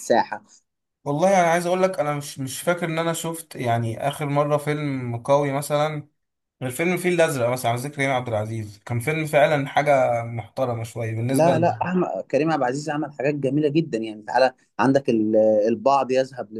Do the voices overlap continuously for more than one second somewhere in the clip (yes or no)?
no